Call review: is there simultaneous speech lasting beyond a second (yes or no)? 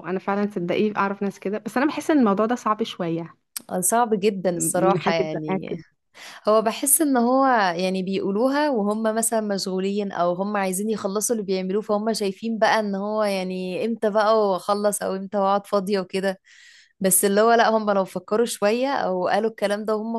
yes